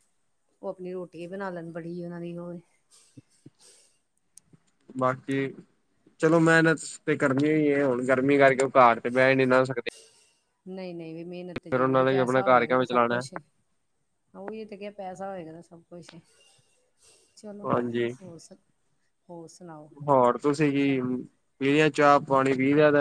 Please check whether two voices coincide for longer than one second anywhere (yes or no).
yes